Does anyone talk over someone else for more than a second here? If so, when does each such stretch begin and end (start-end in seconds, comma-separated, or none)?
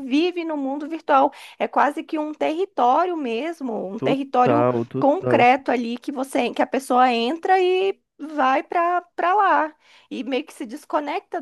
4.0-5.5